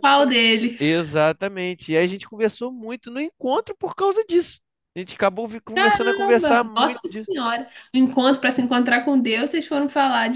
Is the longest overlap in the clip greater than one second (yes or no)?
yes